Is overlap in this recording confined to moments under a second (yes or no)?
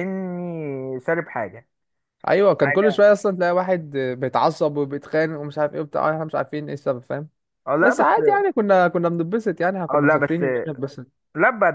yes